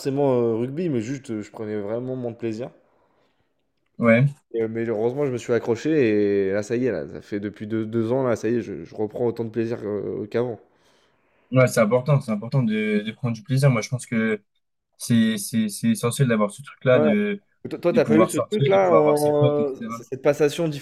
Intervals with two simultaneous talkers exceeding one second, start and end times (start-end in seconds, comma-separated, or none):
17.9-20.0